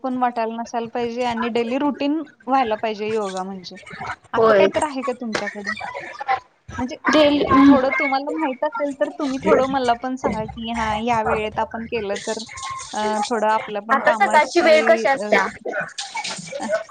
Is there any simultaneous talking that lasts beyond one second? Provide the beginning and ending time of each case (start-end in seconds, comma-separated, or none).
13.9-15.3